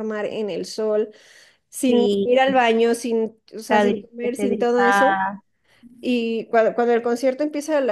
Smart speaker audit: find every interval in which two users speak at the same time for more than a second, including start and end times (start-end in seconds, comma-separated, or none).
3.6-5.2